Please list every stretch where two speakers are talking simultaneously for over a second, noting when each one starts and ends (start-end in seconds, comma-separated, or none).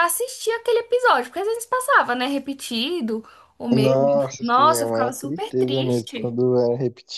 3.7-6.3